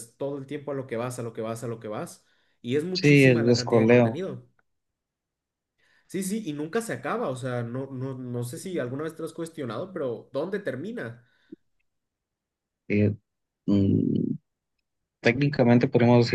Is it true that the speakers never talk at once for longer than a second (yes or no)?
no